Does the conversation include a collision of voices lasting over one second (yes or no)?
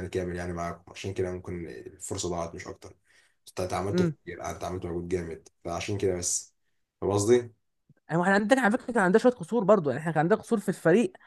no